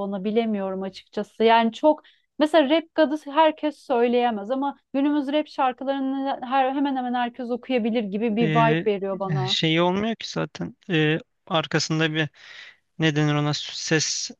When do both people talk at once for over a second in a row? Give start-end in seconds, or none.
none